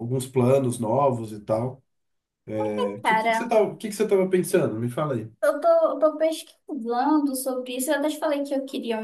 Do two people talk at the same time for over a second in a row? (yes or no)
no